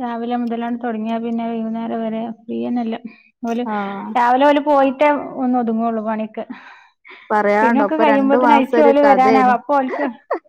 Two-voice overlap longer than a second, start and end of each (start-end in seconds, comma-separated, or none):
7.6-9.5